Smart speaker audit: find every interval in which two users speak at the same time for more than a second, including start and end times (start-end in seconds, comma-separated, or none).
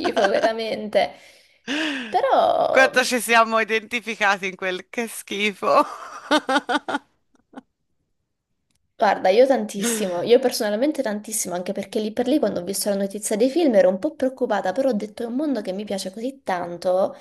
none